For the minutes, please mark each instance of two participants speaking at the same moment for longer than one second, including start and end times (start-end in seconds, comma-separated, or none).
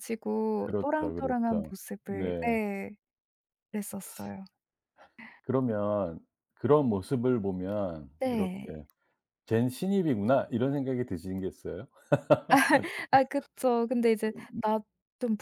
0.6-2.6